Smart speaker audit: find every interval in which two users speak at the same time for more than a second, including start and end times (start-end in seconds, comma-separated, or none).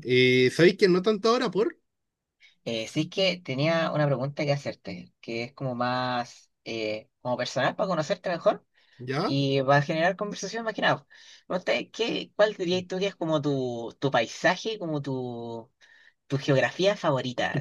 none